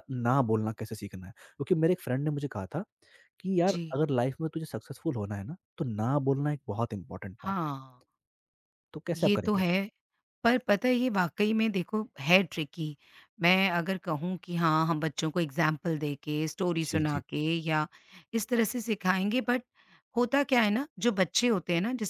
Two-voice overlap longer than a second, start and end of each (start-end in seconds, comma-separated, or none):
none